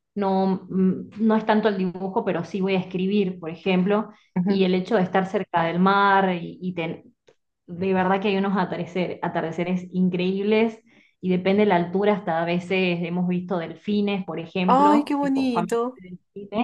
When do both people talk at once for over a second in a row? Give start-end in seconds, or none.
14.7-16.0